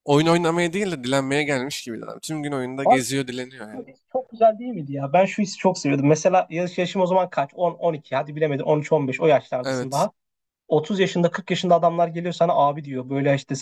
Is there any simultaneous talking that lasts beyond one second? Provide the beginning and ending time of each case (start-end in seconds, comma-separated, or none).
none